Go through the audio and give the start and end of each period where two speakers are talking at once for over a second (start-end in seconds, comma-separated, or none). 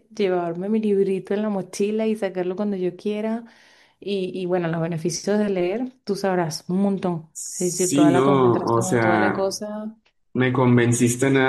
7.3-9.6